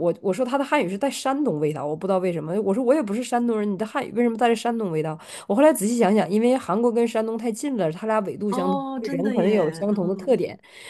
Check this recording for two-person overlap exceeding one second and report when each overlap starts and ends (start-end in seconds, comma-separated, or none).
8.5-10.3